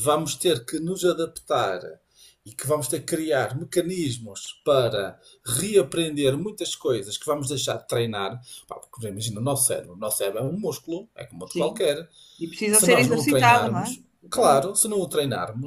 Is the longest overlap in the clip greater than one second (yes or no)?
yes